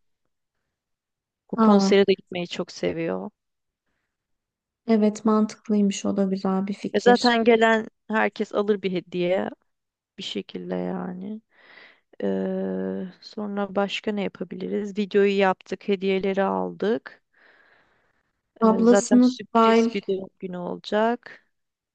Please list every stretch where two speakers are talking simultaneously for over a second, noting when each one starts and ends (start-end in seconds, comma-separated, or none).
18.6-19.9